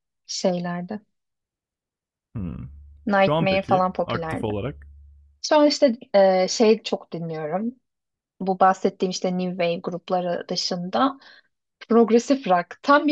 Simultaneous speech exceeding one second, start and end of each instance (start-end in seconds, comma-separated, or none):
3.1-4.6